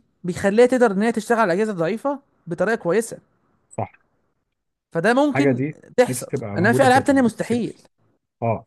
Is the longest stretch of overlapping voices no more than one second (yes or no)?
no